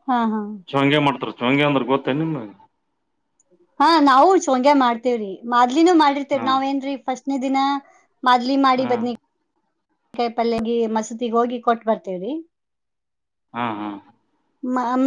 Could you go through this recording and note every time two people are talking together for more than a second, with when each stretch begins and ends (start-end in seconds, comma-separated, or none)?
none